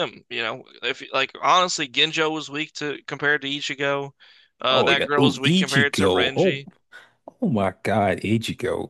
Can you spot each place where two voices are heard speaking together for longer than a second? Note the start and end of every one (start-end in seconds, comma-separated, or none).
4.7-6.6